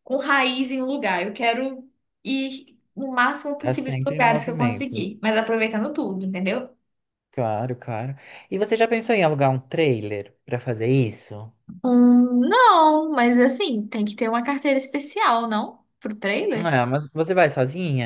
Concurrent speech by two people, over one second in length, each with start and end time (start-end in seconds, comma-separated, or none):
3.6-5.0